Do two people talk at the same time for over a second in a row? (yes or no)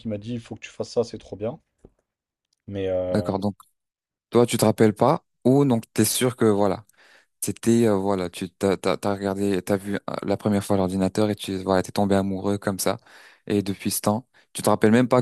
no